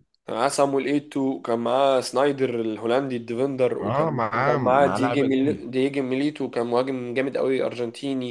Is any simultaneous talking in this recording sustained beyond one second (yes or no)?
yes